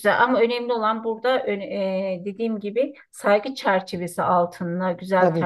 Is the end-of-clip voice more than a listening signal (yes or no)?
no